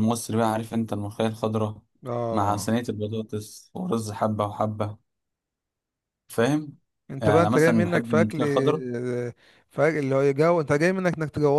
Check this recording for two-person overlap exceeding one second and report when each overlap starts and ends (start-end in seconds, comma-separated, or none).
7.2-8.4